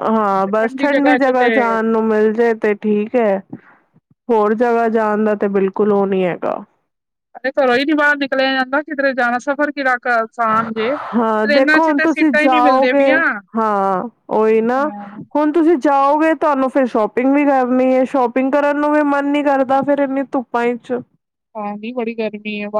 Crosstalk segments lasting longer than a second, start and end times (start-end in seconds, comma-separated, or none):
11.4-13.0